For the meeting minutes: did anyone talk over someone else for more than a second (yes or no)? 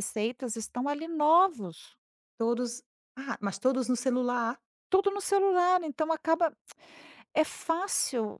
no